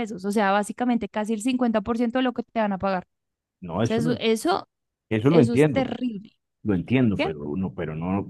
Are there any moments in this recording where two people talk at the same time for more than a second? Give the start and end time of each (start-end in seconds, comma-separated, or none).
none